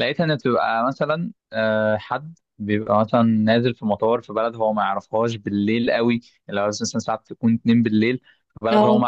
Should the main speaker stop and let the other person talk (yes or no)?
no